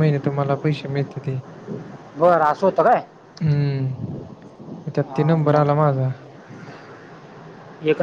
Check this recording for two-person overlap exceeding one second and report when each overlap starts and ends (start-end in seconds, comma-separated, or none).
none